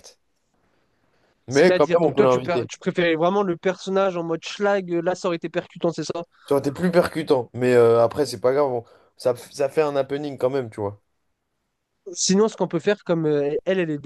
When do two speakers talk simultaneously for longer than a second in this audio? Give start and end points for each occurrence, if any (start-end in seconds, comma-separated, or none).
1.5-2.7